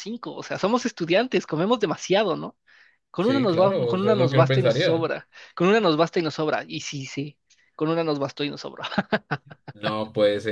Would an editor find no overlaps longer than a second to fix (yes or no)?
no